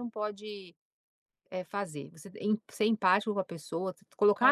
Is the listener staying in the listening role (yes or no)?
yes